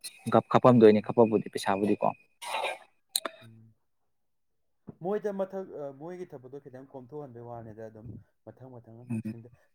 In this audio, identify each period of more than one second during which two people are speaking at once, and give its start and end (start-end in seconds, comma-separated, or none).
none